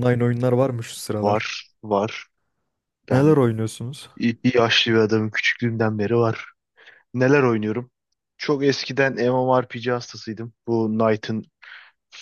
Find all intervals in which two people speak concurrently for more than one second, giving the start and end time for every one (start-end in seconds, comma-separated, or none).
none